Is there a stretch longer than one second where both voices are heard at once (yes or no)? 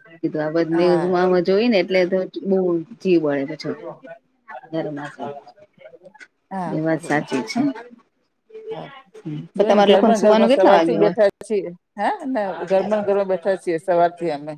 yes